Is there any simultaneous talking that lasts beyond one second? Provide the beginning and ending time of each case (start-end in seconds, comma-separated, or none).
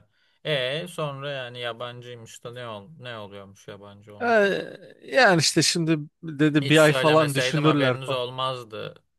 6.6-8.2